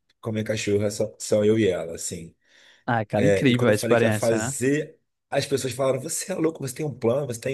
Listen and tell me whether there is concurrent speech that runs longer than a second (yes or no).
yes